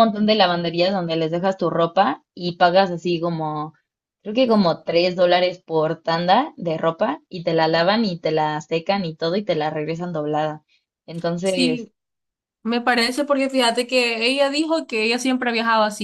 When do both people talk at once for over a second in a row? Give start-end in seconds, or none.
none